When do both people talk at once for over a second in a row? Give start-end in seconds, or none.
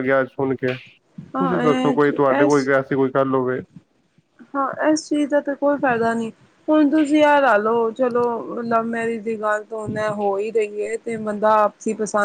1.3-2.7